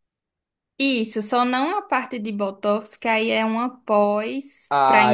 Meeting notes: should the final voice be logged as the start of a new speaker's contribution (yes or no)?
yes